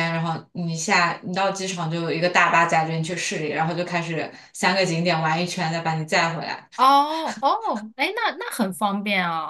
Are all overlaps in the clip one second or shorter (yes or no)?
yes